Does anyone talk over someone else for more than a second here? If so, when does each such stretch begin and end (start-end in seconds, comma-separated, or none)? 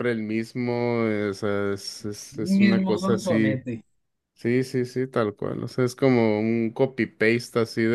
2.3-3.6